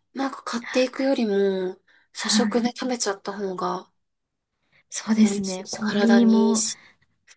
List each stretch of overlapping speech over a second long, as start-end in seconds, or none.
5.2-6.6